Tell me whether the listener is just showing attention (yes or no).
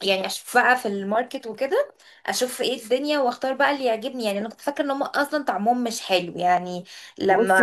no